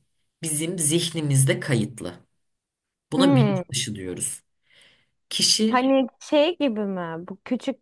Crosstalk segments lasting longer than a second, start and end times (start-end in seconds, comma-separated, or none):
none